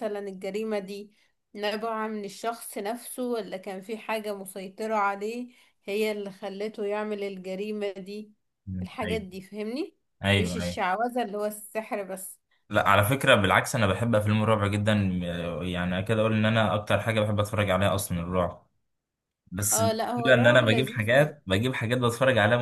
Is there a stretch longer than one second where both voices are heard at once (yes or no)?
yes